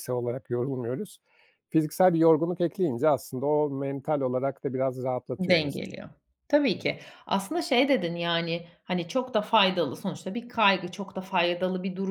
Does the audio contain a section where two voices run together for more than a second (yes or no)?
no